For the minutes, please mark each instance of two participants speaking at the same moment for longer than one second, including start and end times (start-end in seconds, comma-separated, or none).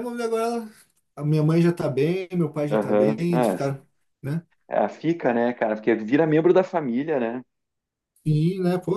none